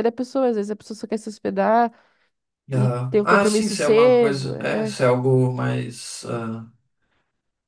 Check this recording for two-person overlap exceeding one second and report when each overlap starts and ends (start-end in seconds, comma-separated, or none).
2.7-5.0